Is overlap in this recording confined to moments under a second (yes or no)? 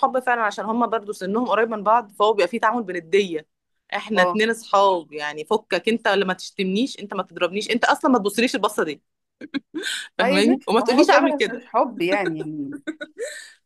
no